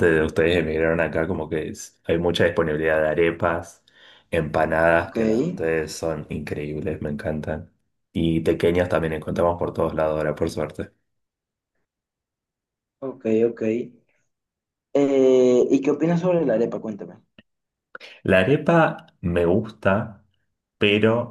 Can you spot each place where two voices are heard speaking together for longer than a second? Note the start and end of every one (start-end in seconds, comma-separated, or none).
none